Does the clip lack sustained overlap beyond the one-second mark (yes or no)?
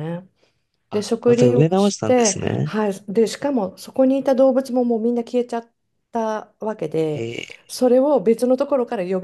no